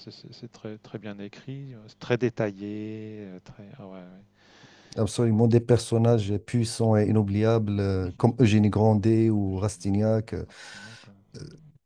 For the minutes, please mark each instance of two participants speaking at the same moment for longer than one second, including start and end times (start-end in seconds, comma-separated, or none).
none